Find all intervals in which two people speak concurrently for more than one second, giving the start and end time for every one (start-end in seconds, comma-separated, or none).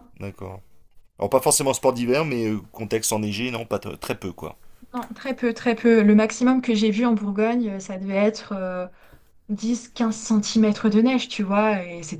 none